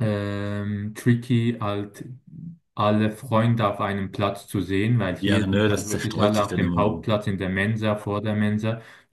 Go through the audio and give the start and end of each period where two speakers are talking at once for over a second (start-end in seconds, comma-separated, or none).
5.2-7.1